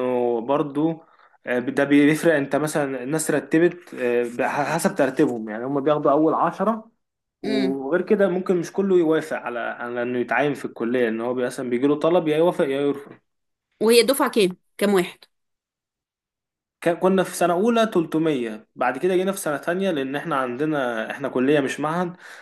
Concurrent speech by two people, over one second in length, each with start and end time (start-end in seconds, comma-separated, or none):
none